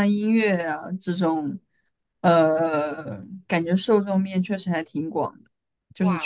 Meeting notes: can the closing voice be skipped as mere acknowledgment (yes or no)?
no